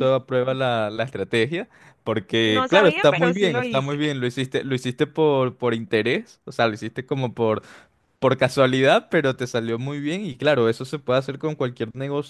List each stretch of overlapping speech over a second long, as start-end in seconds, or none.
2.5-4.0